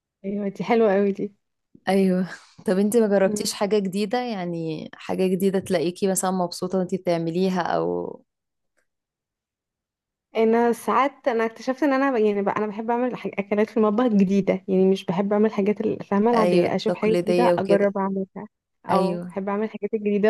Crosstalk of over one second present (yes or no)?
yes